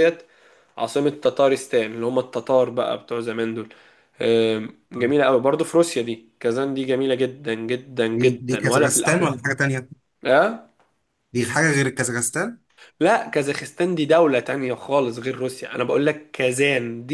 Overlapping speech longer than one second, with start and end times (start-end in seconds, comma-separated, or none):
8.1-9.4